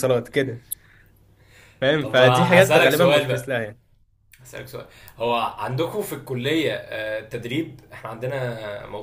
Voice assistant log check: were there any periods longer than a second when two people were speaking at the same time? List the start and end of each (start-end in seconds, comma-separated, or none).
2.0-3.5